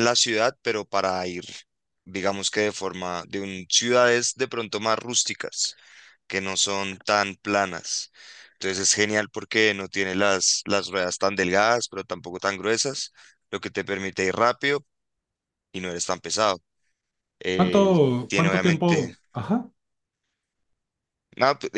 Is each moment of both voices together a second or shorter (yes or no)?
no